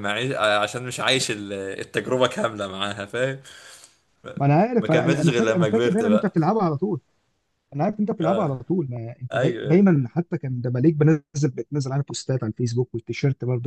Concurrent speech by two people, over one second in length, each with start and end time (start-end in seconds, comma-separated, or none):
4.8-6.3